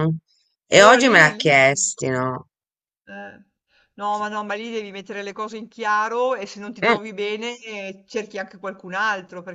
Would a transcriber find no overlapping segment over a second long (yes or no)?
no